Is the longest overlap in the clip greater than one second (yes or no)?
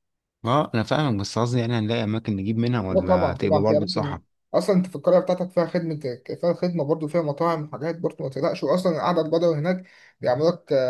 yes